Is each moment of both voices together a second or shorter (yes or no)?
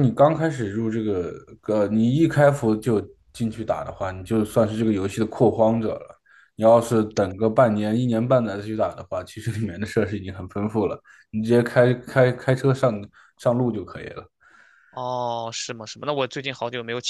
yes